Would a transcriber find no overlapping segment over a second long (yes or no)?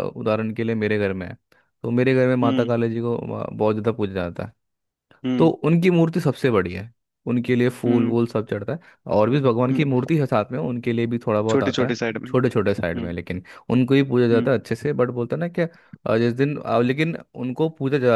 no